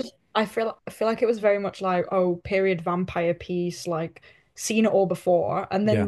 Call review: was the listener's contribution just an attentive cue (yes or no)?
yes